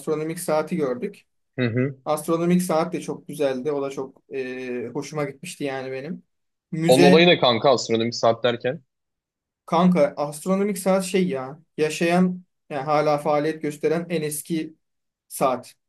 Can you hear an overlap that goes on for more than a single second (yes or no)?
no